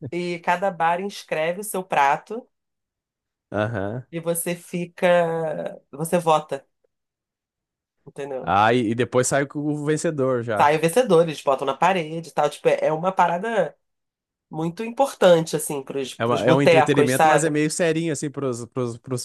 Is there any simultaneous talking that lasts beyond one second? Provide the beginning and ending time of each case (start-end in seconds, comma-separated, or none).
16.2-17.5